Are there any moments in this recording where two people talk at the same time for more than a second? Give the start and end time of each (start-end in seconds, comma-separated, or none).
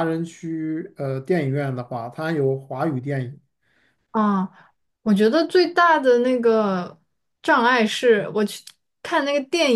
none